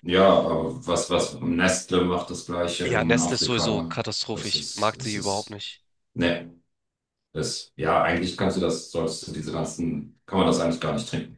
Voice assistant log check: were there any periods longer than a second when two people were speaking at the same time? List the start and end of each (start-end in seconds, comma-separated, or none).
2.8-5.6